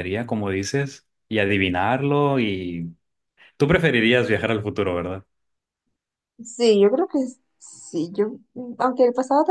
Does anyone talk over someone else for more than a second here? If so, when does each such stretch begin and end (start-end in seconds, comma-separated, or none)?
none